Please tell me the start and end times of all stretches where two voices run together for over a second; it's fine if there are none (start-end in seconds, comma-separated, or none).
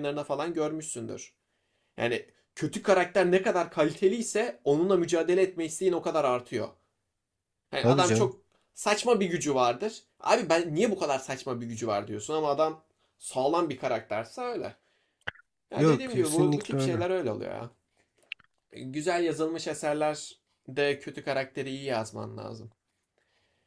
15.8-17.1